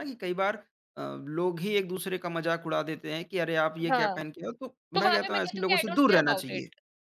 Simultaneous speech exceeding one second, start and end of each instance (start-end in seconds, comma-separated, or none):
4.9-6.7